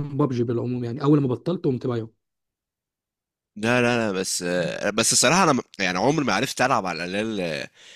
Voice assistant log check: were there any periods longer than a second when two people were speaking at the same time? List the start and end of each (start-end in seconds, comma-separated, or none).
none